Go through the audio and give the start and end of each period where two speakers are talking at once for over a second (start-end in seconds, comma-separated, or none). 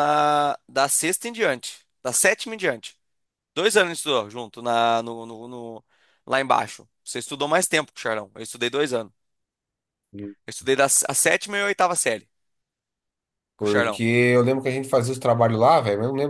none